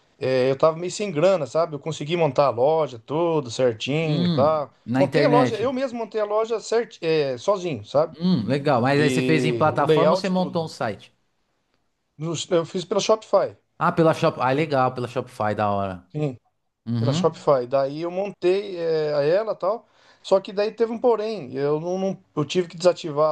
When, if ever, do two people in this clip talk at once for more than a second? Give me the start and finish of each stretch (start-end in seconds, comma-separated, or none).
4.0-5.7, 8.9-10.7